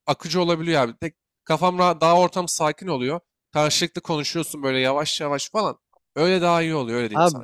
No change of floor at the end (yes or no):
no